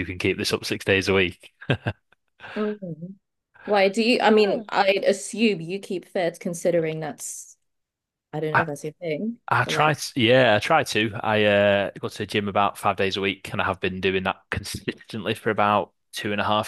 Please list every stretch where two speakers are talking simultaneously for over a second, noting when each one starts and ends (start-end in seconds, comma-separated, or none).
none